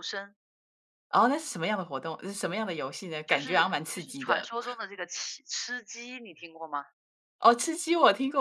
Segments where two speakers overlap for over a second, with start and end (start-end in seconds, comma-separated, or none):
3.3-4.5